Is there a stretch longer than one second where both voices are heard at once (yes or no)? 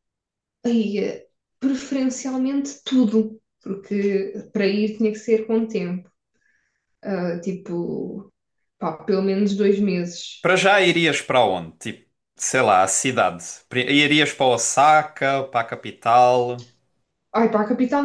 no